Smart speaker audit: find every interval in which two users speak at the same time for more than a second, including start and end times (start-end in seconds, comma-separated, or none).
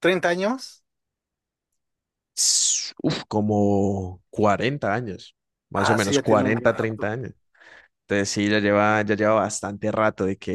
5.8-7.1